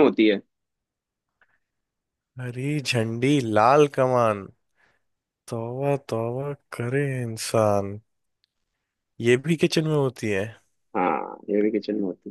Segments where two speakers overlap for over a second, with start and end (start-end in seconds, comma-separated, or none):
none